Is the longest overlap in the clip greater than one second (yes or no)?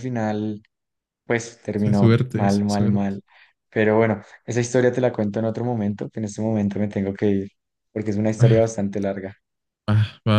yes